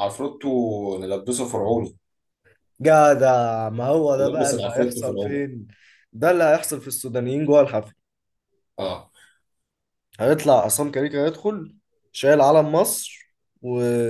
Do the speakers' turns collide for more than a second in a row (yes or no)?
yes